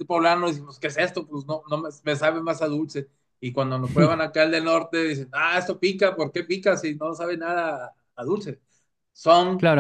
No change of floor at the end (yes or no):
no